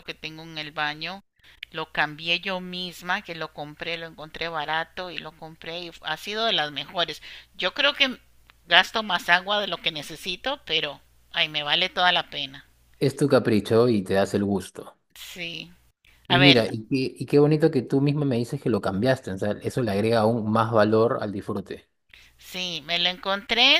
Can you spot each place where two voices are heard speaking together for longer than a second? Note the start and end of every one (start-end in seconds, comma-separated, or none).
none